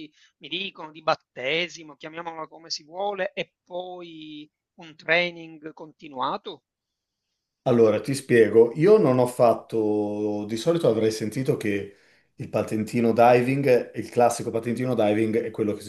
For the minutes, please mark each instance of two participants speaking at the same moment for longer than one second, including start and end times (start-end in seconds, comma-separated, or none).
none